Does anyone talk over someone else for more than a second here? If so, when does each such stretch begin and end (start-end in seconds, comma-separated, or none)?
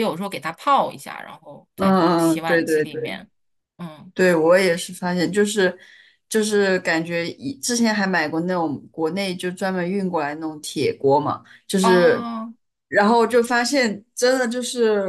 1.7-3.2